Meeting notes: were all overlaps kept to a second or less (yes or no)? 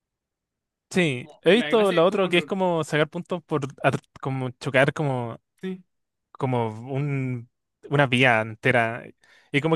no